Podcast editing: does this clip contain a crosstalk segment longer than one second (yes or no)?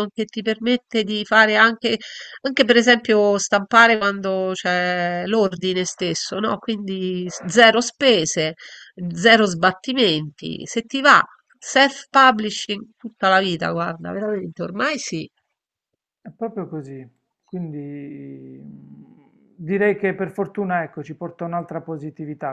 no